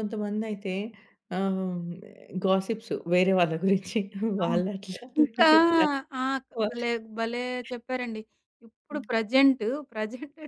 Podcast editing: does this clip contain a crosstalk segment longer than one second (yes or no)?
no